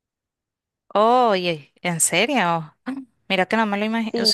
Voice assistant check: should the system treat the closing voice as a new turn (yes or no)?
no